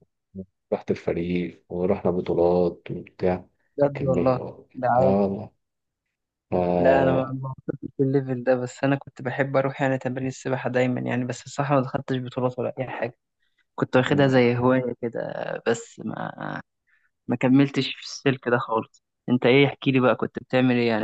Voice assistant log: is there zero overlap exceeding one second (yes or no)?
yes